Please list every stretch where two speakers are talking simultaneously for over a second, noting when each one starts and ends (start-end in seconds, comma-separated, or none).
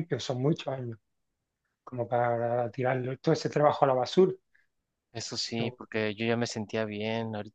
none